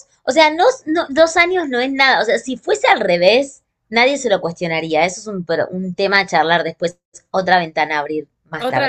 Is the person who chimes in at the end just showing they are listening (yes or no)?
no